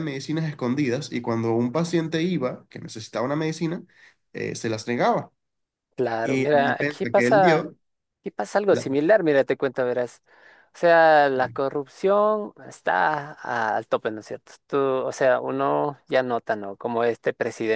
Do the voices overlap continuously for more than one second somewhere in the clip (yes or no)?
yes